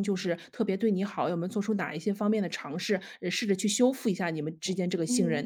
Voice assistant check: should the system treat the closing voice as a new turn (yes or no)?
yes